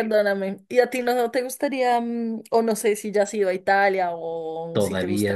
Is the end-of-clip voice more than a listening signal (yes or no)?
yes